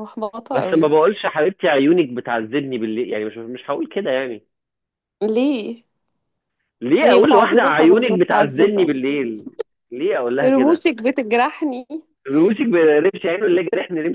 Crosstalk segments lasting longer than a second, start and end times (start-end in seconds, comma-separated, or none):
7.0-8.9